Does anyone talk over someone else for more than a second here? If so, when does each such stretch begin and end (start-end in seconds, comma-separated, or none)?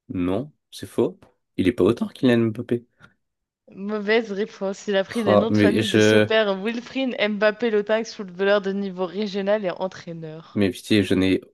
5.1-6.3